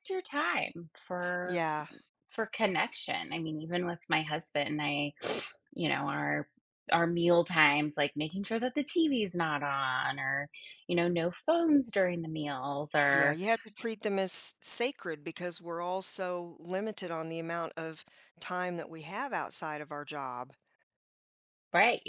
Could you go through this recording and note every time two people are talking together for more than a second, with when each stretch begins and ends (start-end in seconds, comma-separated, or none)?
none